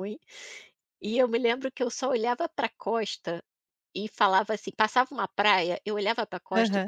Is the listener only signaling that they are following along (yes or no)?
yes